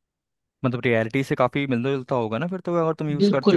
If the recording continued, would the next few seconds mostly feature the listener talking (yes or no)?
yes